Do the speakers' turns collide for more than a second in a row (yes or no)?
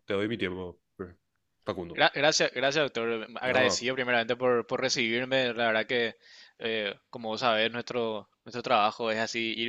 no